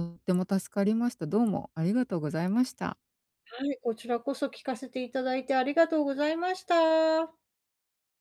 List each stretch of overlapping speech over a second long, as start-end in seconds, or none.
none